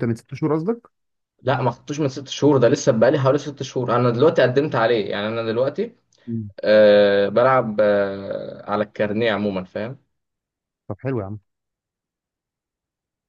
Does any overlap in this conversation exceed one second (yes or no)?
no